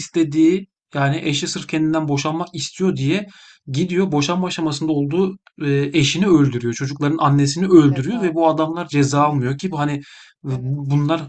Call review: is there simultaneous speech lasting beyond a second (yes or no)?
yes